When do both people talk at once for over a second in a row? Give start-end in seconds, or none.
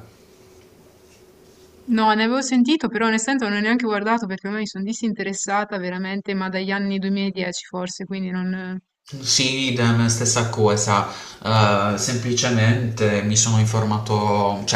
none